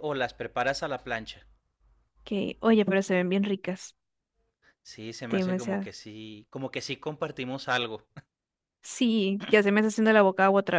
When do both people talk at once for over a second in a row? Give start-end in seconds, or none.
none